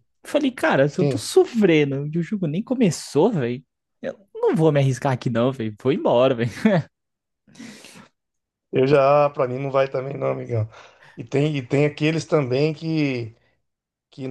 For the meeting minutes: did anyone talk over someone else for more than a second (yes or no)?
no